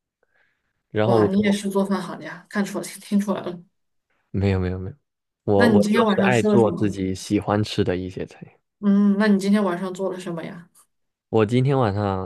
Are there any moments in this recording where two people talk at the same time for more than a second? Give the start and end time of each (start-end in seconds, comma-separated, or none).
5.5-6.9